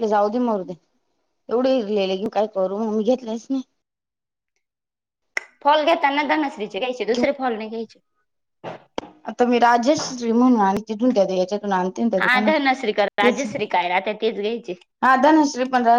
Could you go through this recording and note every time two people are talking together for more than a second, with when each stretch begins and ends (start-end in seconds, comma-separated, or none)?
none